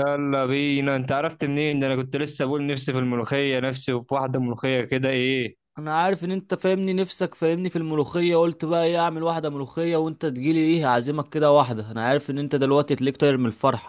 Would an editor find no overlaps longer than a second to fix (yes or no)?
yes